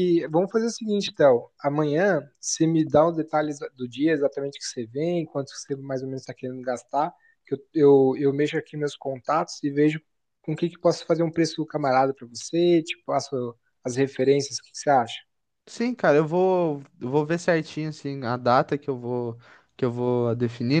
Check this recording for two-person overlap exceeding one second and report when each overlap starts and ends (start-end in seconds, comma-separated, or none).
none